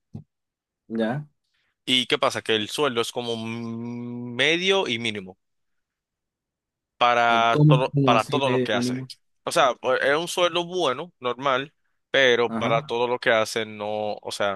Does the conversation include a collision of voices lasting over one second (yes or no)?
yes